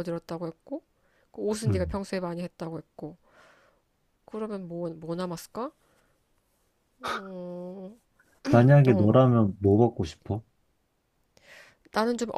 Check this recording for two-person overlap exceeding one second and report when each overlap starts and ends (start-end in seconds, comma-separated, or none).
none